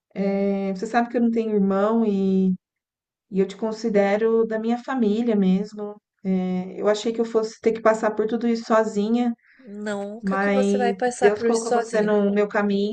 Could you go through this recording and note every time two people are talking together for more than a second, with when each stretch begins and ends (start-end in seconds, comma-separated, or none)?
10.2-12.2